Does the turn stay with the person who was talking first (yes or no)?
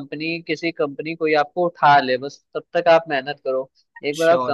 yes